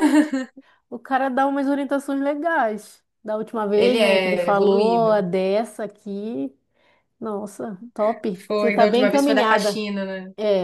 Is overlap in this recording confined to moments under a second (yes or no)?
no